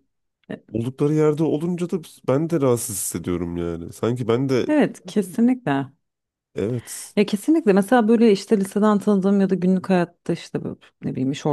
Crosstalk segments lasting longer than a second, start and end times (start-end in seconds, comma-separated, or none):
none